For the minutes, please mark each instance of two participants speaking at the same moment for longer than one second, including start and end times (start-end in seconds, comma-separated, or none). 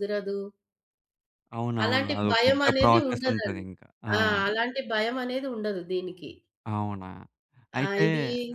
1.8-3.6